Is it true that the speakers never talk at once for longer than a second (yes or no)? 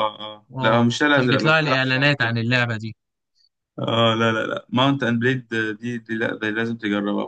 no